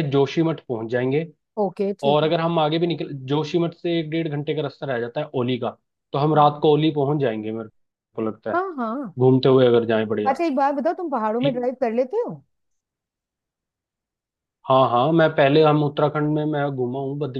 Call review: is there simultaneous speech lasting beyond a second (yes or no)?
no